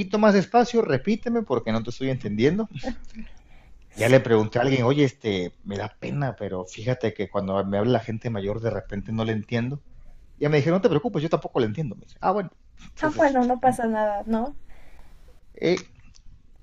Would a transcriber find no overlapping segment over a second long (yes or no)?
yes